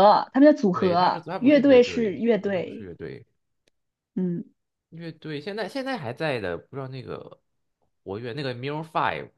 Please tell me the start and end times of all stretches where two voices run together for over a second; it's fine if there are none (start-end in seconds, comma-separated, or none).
0.7-2.9